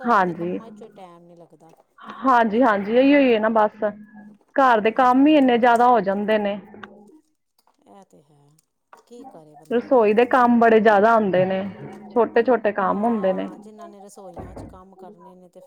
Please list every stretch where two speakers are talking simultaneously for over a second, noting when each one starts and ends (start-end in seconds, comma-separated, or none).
none